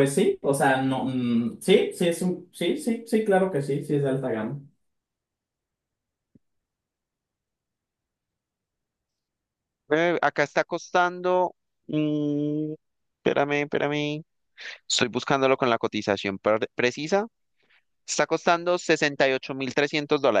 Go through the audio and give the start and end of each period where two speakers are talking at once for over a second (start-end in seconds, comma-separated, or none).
none